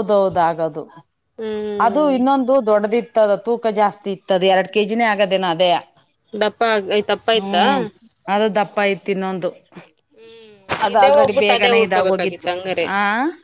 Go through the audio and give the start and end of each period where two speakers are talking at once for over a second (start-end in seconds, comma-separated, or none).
10.9-12.5